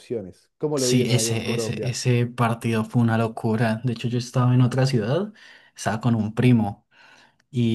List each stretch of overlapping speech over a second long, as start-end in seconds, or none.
0.7-2.0